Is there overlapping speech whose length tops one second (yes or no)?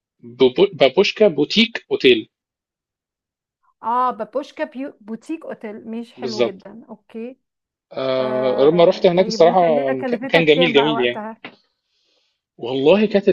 yes